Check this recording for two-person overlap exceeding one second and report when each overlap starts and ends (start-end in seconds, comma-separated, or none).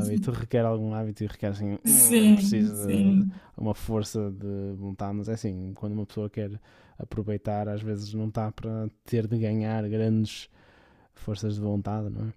1.9-3.4